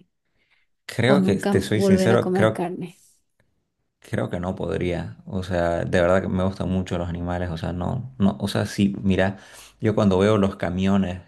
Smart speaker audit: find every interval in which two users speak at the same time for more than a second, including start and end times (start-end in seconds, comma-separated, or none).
1.1-2.7